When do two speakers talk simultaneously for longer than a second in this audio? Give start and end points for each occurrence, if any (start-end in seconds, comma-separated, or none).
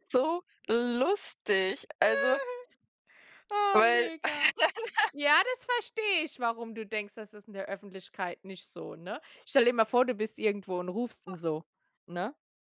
none